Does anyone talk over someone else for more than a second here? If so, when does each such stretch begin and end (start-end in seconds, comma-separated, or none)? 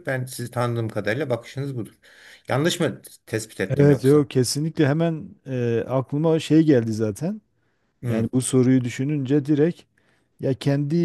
none